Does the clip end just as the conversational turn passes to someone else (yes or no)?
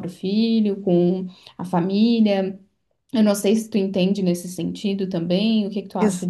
yes